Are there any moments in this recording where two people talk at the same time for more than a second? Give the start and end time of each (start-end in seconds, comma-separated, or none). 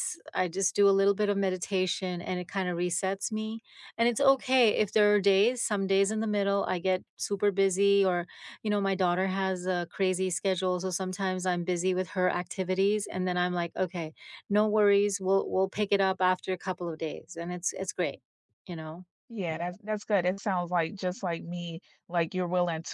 none